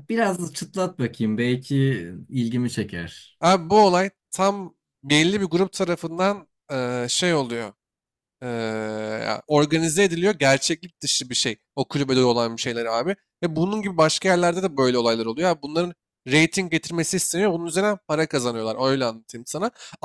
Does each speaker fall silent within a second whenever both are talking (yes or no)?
yes